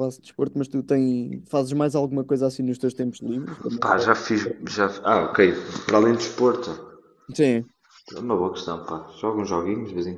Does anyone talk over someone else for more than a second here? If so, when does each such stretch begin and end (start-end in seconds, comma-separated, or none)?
none